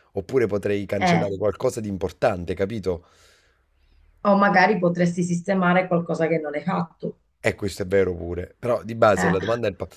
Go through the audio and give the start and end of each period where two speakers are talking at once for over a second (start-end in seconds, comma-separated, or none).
none